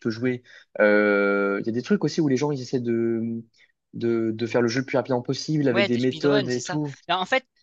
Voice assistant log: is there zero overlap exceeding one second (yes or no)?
no